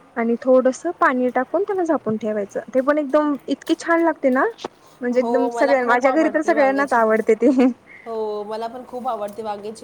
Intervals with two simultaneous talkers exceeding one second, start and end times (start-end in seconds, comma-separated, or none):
5.1-7.3